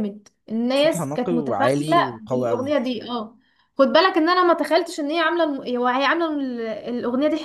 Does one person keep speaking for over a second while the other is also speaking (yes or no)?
yes